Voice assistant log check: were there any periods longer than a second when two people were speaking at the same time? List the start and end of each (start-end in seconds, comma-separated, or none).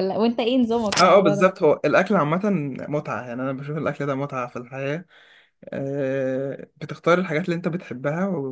none